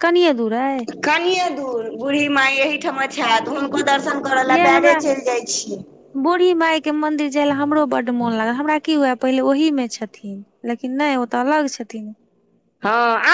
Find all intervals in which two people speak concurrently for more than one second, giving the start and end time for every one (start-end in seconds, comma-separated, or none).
none